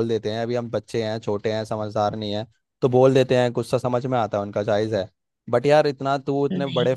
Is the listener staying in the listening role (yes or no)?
yes